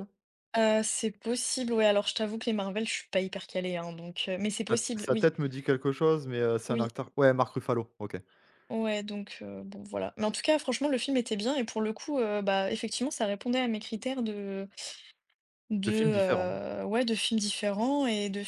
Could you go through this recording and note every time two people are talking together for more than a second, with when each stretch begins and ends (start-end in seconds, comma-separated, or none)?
none